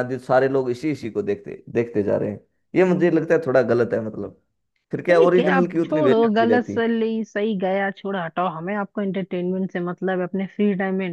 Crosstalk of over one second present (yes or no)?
yes